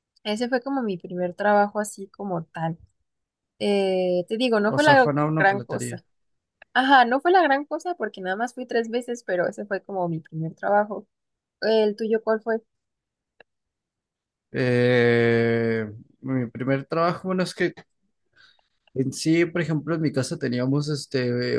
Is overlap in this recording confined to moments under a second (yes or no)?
no